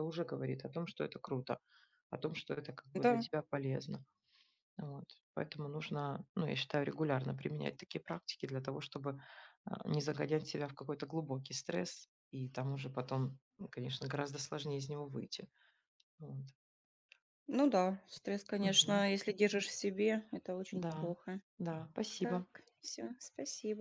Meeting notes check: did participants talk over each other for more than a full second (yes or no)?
no